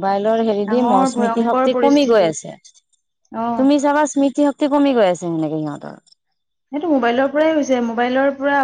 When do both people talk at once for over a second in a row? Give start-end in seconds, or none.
0.7-2.2